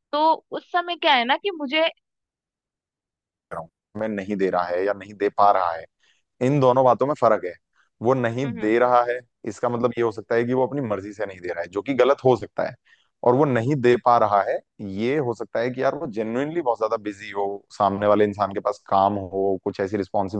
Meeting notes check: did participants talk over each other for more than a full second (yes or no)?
no